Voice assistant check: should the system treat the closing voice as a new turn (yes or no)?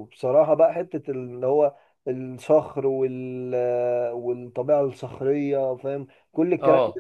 no